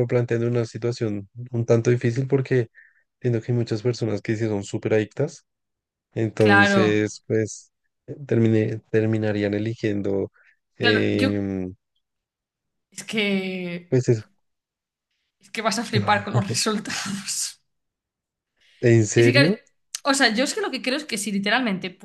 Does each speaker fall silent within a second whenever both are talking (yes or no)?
yes